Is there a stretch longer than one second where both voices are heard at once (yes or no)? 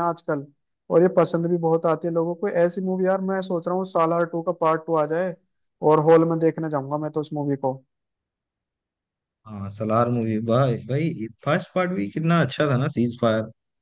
no